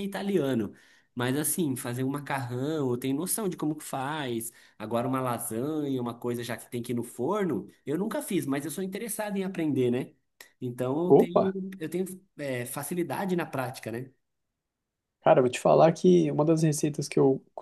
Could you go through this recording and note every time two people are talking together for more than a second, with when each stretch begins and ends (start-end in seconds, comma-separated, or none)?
none